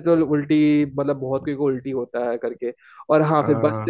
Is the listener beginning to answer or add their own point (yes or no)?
no